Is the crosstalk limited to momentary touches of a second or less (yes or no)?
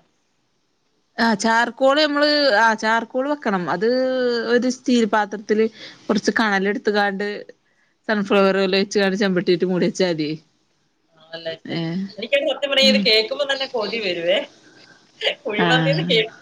yes